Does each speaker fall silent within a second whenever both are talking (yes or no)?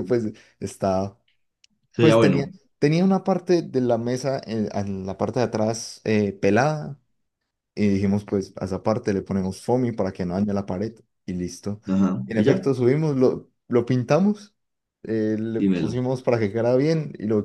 yes